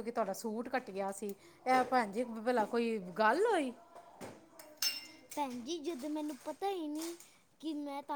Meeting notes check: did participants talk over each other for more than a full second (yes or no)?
no